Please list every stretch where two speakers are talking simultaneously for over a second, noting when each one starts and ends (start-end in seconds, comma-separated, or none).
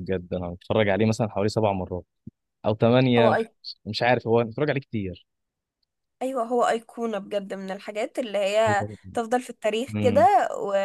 none